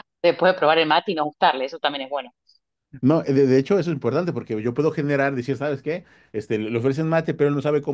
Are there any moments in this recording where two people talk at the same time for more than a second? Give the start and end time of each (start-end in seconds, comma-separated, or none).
none